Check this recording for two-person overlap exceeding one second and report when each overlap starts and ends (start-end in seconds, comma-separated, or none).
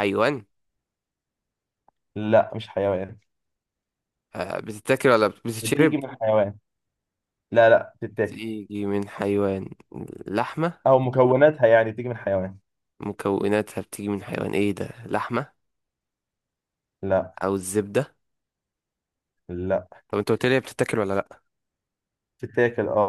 none